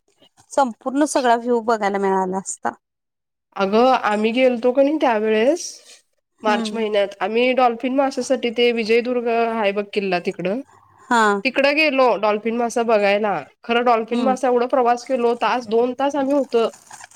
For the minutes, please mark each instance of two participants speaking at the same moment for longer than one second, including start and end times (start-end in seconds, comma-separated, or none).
none